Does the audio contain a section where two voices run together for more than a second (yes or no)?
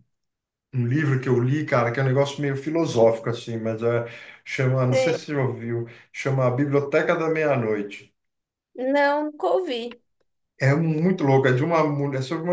no